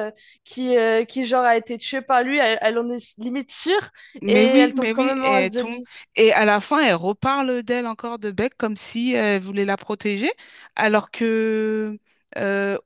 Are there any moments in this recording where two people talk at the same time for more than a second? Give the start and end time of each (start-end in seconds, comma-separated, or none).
4.3-5.8